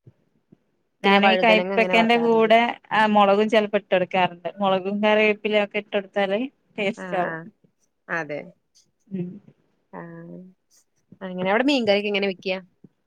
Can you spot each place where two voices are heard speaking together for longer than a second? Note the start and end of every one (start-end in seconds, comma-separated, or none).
1.1-2.5